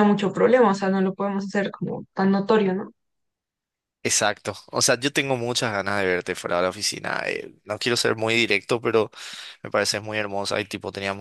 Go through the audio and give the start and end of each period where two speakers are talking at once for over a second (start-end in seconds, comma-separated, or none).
none